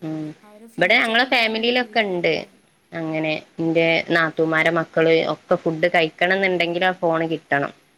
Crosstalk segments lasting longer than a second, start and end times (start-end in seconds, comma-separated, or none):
0.8-2.3